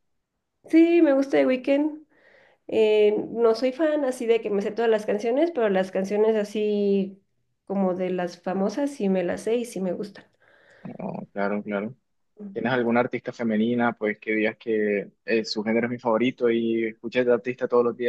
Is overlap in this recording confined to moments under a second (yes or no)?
yes